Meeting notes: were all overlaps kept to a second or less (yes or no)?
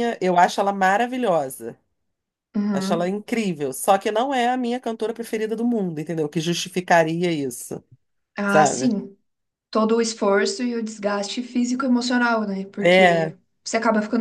yes